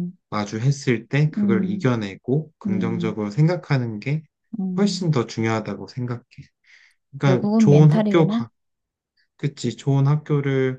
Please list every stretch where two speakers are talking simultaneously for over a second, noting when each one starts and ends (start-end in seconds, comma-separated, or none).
7.2-8.4